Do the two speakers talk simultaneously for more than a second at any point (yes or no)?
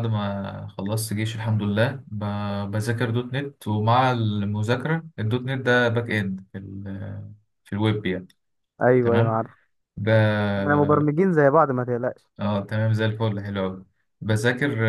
no